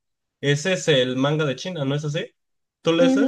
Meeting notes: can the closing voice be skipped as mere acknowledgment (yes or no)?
no